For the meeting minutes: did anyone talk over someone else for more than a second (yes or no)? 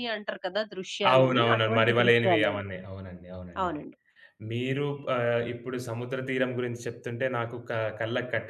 yes